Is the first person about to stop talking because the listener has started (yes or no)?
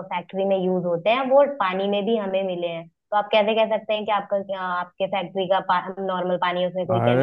yes